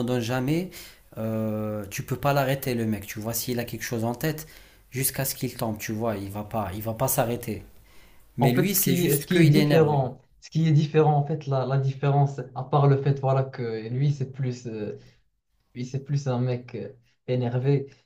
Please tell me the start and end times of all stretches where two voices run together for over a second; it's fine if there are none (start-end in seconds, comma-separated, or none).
8.4-10.1